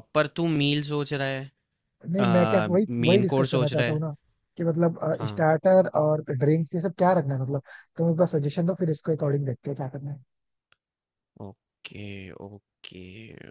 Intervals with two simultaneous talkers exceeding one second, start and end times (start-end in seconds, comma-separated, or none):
2.2-4.0